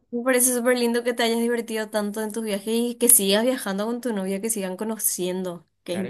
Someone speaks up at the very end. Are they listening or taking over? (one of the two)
taking over